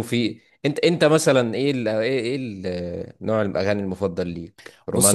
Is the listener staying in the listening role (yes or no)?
no